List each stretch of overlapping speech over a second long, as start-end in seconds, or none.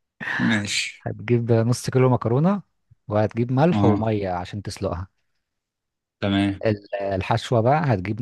none